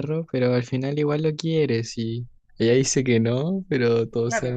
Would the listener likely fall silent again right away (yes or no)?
no